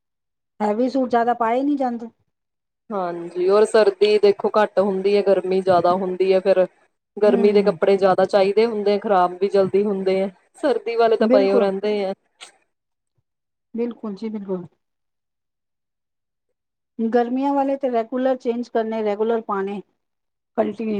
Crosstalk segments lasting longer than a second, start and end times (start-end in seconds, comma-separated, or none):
none